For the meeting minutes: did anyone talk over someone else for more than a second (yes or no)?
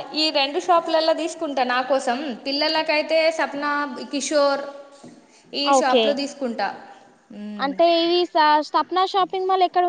no